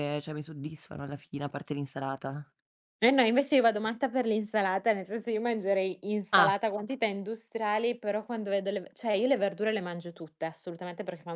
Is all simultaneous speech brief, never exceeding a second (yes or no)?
yes